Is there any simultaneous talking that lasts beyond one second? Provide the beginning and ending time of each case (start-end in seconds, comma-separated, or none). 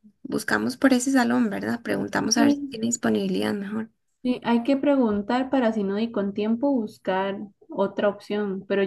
none